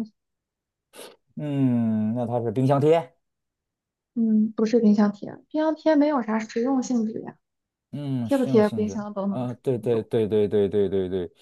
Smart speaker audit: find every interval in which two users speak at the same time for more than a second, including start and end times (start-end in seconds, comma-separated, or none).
8.2-10.1